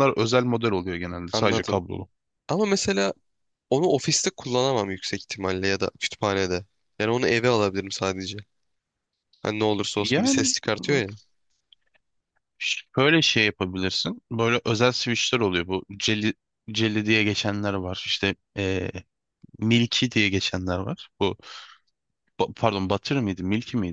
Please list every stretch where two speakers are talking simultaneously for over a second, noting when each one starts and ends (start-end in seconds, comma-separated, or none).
none